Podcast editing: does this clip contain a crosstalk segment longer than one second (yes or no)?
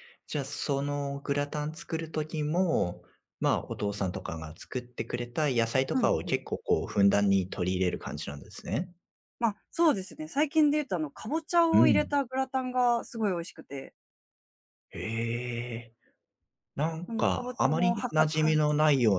yes